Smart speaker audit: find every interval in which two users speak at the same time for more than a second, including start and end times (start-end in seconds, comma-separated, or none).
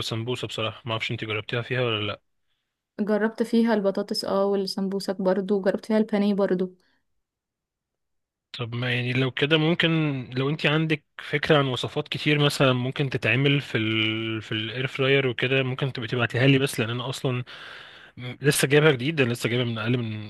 none